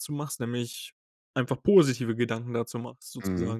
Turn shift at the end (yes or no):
yes